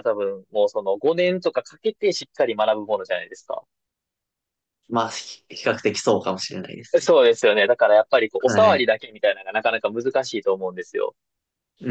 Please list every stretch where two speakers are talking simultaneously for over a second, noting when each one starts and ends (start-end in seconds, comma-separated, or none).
none